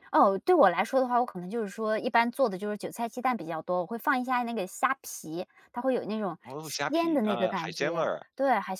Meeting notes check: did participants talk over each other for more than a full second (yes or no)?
yes